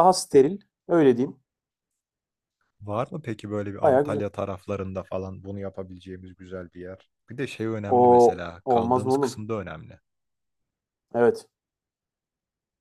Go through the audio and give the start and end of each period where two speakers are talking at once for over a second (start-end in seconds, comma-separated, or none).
7.9-9.4